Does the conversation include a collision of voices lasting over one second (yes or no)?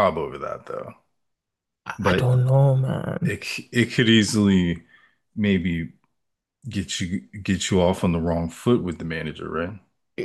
no